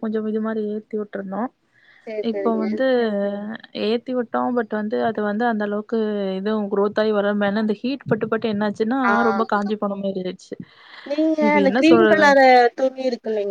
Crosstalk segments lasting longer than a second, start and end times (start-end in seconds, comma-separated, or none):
none